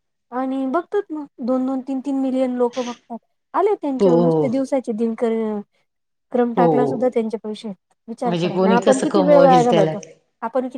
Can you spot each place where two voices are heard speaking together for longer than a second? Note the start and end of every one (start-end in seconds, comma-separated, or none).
8.3-9.9